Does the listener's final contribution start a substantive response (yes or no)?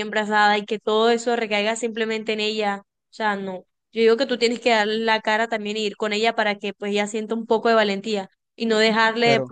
no